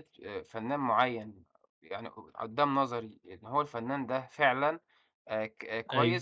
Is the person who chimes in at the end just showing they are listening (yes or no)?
yes